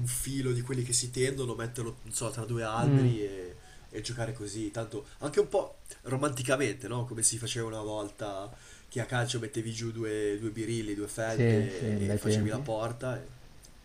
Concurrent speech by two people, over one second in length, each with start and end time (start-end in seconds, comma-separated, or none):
11.3-12.7